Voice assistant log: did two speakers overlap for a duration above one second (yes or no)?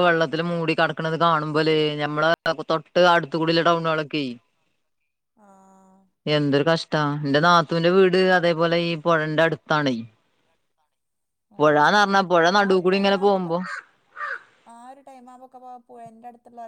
no